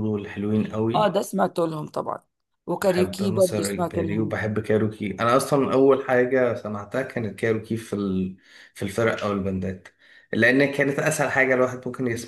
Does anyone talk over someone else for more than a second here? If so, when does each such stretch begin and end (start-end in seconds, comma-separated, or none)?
2.8-4.4